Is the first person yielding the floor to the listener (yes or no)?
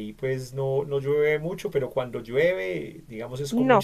yes